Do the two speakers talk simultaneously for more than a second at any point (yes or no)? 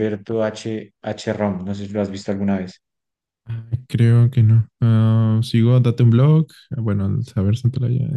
no